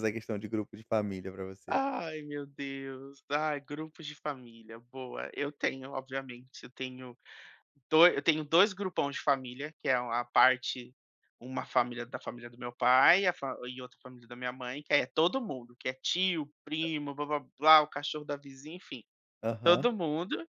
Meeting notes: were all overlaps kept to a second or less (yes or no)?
yes